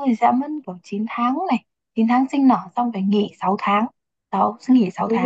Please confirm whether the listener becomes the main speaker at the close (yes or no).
no